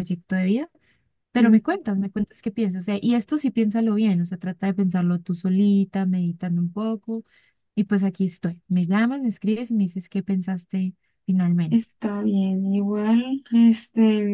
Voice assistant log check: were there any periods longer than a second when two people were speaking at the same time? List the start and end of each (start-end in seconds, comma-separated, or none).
none